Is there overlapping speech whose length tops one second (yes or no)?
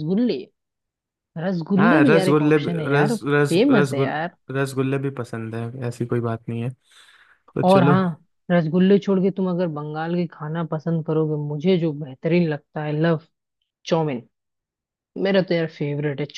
yes